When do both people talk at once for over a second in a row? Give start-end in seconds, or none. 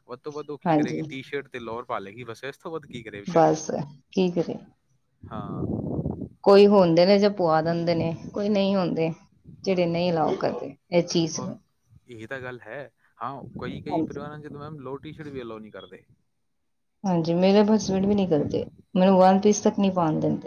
none